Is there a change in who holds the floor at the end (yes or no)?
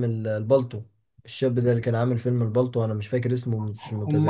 yes